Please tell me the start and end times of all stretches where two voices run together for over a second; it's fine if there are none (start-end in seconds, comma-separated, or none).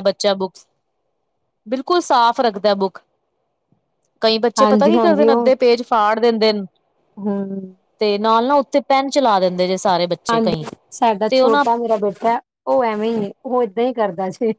none